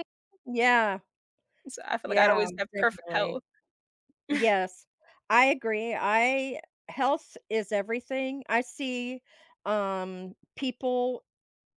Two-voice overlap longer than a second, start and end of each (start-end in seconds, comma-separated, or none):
2.0-3.4